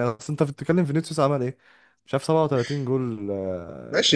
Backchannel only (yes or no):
no